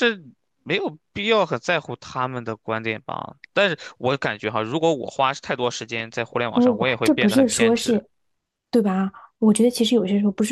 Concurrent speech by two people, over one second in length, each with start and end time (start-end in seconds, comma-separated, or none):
6.5-8.0